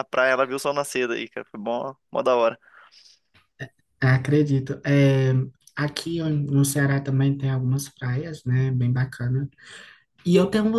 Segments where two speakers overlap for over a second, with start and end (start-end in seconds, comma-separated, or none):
none